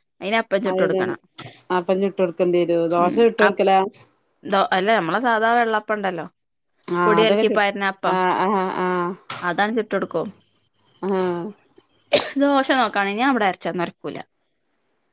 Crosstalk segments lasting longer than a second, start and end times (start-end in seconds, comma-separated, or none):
none